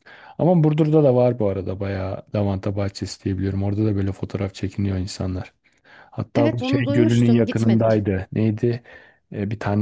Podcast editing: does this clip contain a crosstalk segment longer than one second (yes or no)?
yes